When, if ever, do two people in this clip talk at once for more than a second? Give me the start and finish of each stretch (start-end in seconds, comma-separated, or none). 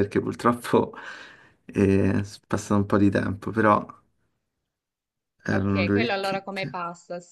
5.5-6.8